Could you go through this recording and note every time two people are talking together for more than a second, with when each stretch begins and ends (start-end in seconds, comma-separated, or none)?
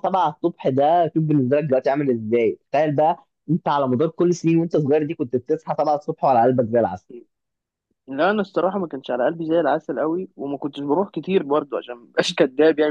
none